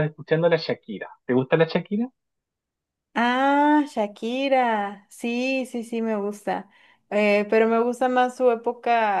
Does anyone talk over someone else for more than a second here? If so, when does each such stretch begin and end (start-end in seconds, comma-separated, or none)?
none